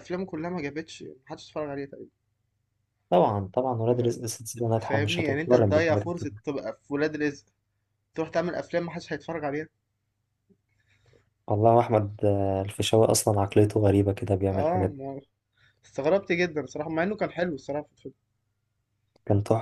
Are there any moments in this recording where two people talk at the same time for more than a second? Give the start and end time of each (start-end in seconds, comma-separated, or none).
4.8-6.3